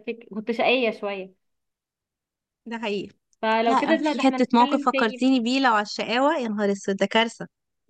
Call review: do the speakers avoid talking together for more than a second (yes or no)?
no